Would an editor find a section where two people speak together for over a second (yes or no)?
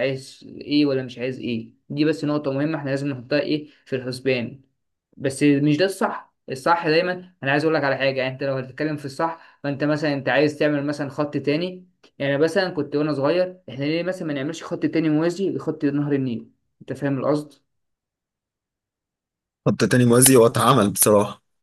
no